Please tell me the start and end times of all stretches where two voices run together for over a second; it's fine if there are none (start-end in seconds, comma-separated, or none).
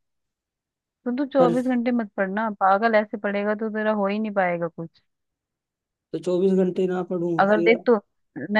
none